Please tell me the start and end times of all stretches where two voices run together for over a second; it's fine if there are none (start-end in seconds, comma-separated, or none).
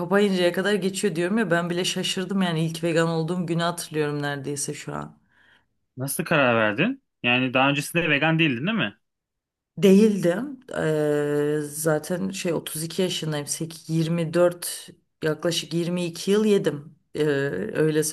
none